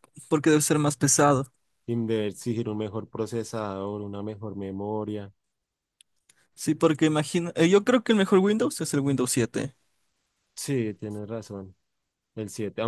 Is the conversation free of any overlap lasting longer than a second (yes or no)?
yes